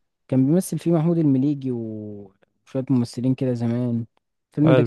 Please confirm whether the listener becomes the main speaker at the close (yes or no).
no